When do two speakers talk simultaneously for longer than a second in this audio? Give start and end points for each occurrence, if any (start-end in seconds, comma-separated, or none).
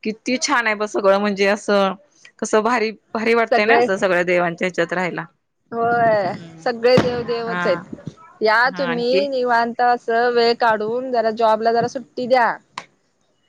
none